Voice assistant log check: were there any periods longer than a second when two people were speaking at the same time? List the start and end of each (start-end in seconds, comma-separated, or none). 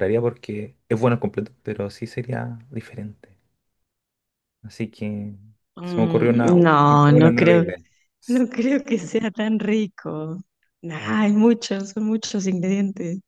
5.8-7.6